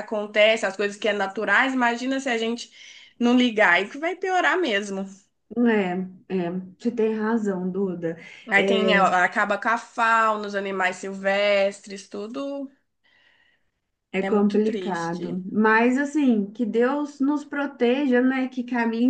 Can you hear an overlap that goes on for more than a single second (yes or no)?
yes